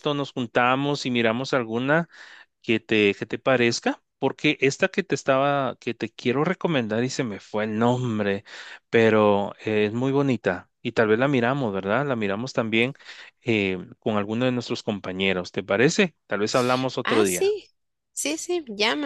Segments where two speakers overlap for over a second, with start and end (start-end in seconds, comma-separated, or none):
none